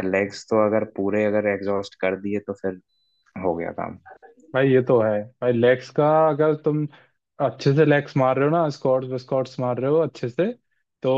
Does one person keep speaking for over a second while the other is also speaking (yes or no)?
no